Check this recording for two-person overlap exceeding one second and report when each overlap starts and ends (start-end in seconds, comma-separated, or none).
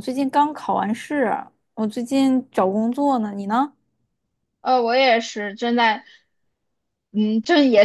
none